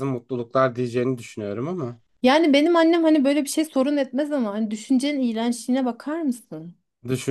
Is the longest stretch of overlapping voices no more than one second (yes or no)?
yes